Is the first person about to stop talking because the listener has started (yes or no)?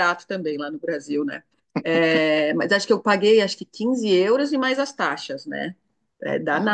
no